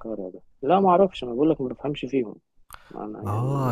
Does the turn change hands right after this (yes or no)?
yes